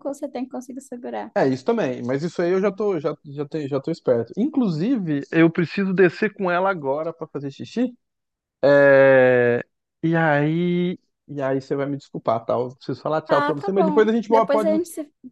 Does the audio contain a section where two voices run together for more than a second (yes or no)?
yes